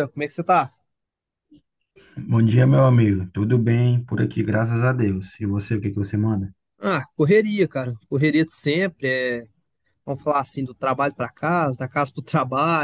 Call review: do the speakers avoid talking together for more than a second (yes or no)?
yes